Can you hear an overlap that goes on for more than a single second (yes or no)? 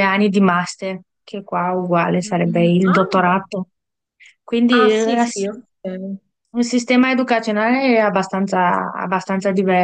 yes